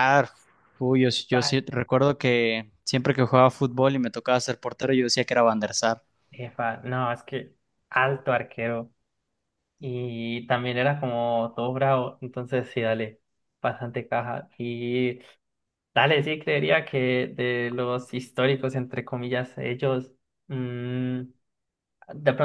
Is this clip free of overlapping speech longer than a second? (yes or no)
yes